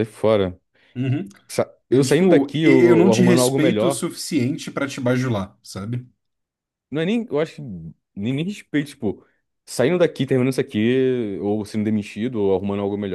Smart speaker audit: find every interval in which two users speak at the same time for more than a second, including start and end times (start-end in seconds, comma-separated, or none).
1.9-4.1